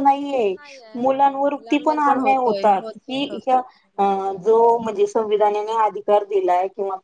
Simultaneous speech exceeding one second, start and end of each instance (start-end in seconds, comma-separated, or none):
1.0-3.6